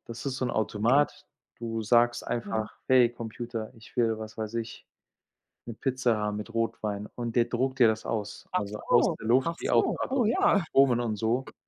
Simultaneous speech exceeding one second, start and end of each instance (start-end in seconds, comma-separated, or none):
8.5-10.6